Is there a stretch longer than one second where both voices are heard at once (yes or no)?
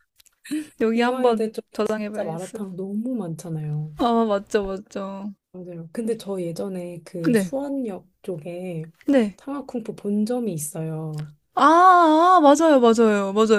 yes